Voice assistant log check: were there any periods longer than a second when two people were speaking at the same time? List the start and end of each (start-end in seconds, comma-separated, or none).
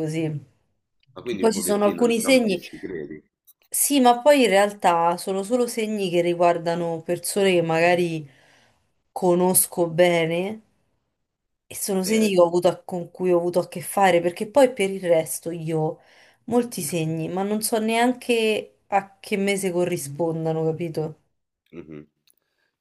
1.4-2.6